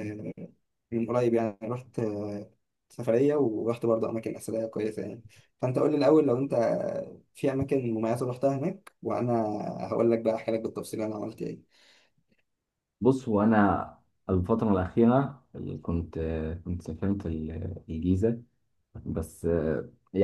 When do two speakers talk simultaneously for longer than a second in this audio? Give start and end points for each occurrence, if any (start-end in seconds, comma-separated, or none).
none